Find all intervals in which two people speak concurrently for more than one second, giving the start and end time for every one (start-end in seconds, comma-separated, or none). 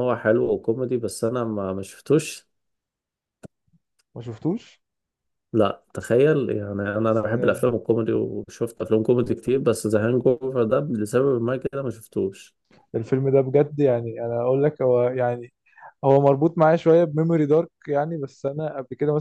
none